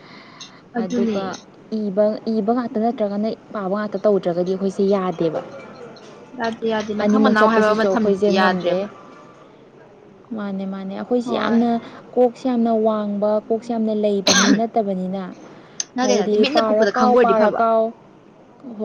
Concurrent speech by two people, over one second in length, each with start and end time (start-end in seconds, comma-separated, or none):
7.0-8.8, 16.0-17.6